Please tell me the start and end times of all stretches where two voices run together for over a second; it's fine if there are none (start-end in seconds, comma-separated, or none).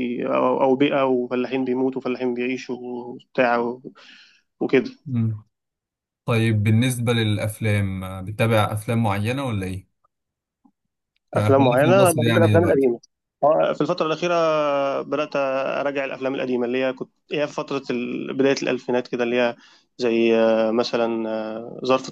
11.3-12.9